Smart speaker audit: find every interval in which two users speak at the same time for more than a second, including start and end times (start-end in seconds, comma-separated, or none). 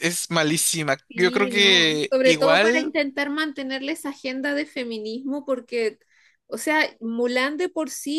1.1-2.9